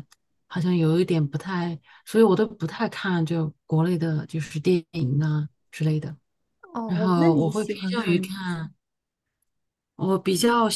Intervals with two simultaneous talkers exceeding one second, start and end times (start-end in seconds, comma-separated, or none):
6.9-8.3